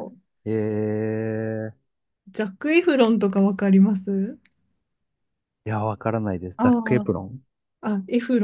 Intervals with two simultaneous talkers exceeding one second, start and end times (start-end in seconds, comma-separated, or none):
none